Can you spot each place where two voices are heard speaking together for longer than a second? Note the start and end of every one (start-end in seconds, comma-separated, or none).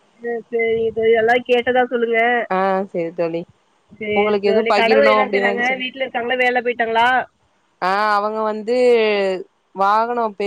4.2-5.8